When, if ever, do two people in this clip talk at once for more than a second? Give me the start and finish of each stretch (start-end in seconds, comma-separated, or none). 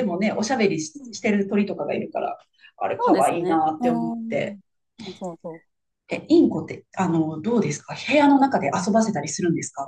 3.0-4.6